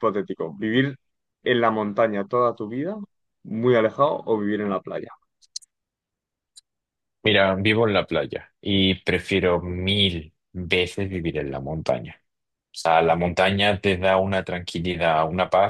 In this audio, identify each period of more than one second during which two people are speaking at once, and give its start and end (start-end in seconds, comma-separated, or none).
none